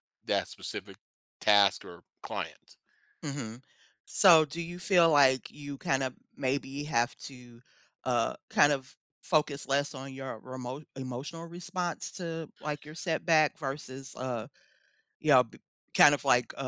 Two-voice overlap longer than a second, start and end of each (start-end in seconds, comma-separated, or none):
none